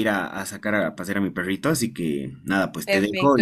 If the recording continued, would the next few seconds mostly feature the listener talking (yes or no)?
yes